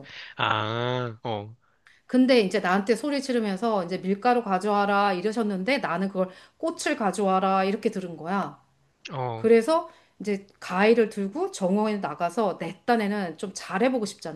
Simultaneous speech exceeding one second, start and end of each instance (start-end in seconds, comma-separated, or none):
none